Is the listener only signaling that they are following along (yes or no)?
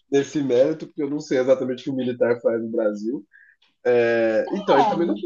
yes